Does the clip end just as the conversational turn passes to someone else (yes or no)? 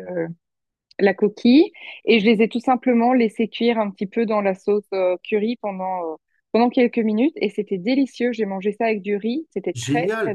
yes